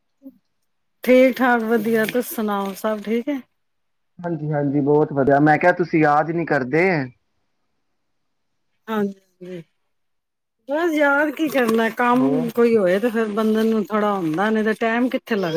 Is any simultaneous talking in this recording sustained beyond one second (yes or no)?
no